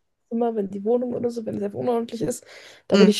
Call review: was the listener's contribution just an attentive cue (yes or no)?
yes